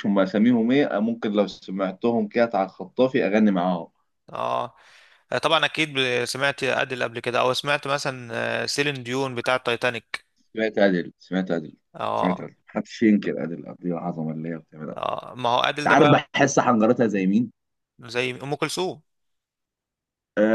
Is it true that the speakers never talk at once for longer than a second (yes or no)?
yes